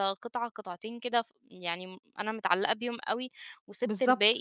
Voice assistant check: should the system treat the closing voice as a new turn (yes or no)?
no